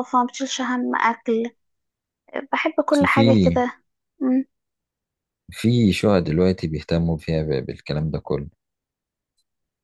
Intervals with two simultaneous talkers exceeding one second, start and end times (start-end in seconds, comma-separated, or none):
none